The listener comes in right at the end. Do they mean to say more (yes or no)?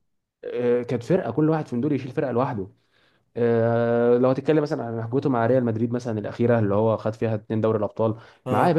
no